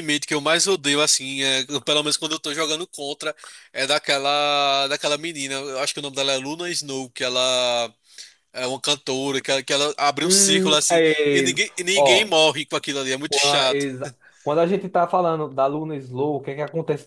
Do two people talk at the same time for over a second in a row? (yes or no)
yes